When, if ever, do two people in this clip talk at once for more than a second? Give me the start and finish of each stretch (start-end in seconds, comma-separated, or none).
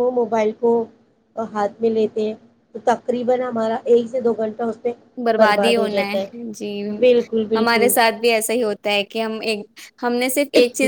none